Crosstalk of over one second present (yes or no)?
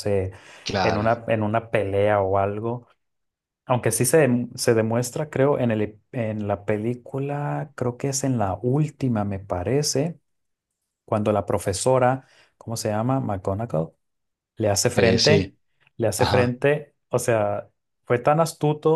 no